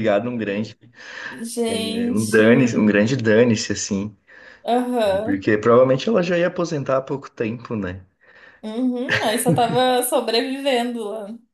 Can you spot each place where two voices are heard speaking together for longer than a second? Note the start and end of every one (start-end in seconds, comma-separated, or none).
1.7-2.9